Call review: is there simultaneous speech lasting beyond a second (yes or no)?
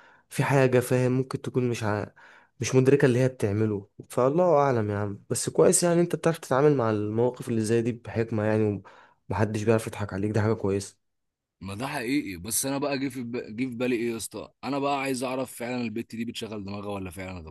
no